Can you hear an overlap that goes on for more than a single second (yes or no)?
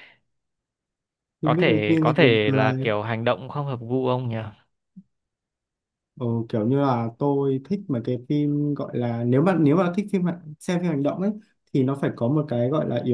yes